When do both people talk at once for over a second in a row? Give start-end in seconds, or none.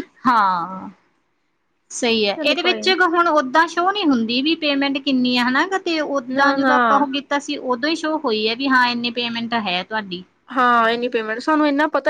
none